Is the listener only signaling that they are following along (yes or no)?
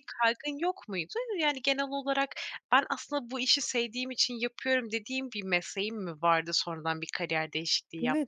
no